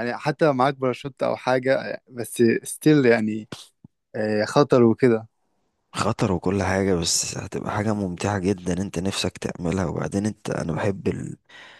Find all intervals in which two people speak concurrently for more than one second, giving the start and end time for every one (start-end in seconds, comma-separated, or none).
none